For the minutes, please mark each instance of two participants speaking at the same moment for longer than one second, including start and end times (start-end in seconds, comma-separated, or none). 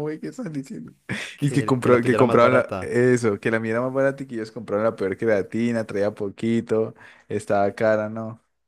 1.4-2.9